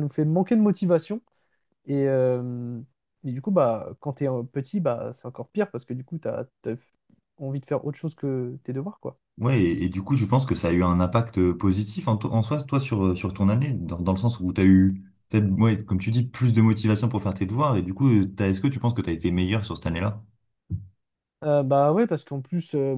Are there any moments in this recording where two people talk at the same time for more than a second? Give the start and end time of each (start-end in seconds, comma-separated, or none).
none